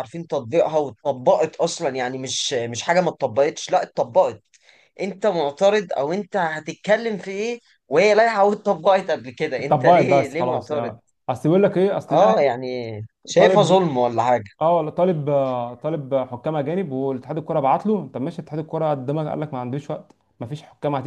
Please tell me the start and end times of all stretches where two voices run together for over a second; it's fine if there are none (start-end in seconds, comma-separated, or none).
9.6-10.9